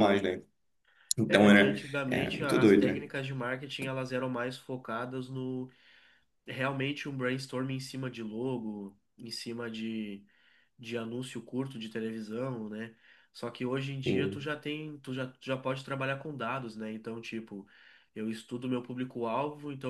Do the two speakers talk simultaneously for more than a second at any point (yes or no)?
yes